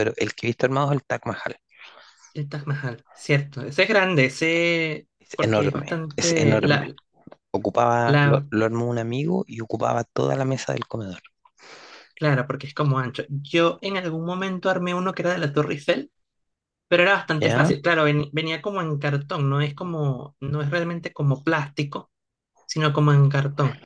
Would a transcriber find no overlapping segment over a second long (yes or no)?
no